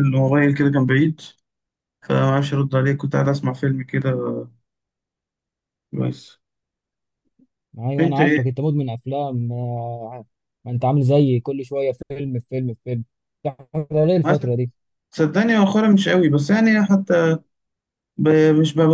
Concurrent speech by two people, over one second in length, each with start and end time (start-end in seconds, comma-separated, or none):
none